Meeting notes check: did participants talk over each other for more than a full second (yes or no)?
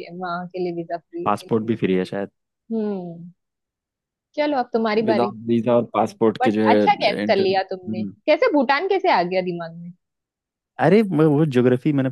yes